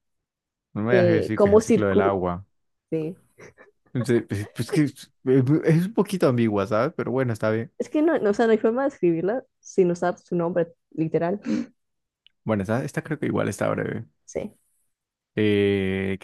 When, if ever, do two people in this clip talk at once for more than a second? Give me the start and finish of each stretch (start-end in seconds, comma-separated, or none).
0.9-2.2